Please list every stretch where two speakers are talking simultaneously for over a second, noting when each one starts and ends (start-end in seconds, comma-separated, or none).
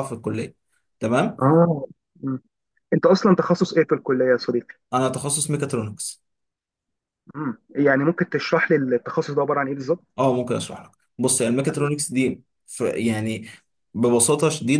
none